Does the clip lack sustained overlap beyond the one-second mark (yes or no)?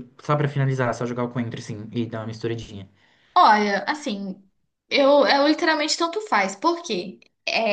yes